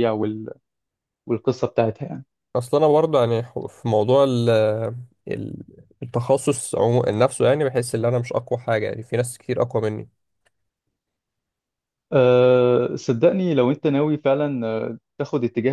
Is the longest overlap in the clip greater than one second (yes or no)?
no